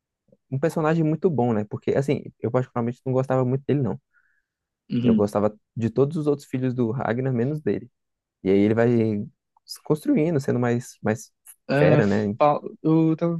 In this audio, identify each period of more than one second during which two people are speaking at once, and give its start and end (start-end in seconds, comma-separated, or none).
none